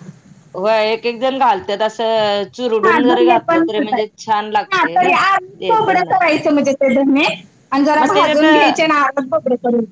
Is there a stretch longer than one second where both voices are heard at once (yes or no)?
yes